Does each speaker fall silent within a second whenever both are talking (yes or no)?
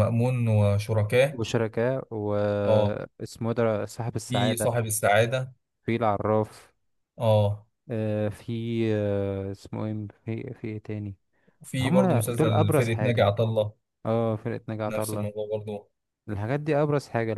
no